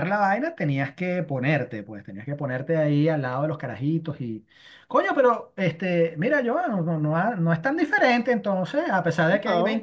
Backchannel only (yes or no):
no